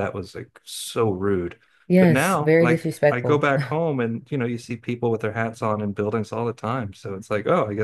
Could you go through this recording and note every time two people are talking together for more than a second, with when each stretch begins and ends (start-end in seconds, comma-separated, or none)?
2.0-3.5